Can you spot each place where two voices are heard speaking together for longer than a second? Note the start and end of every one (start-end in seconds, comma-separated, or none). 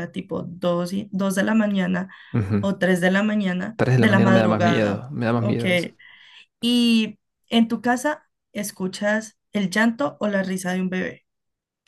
3.8-5.6